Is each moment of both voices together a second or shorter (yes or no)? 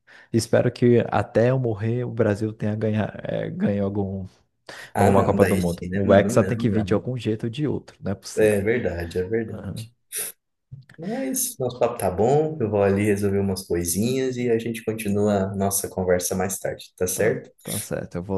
no